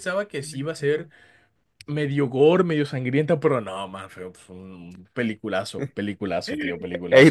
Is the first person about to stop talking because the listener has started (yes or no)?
yes